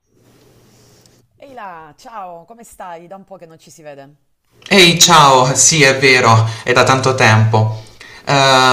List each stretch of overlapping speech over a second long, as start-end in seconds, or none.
none